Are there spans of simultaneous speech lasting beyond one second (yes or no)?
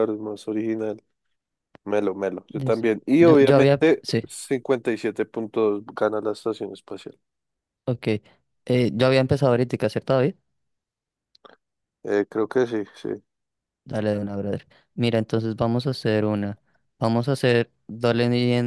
yes